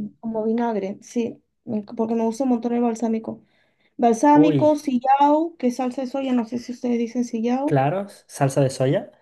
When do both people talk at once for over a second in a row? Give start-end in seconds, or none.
none